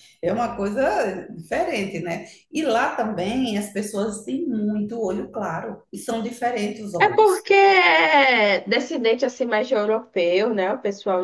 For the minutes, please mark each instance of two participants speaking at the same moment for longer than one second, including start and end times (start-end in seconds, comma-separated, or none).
none